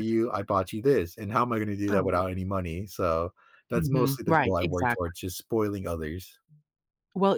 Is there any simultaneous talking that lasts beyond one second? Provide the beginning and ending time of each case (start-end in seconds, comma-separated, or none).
3.8-5.1